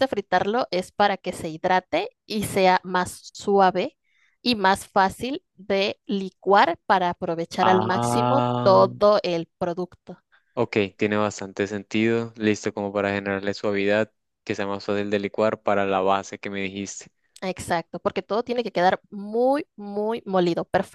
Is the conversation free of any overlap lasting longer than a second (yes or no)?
no